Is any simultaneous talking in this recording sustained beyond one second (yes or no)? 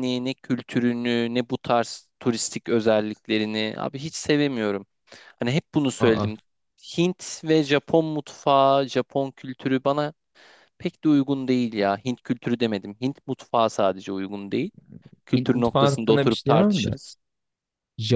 yes